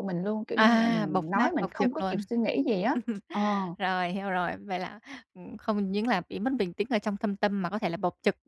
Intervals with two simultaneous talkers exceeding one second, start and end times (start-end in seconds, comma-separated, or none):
0.6-2.2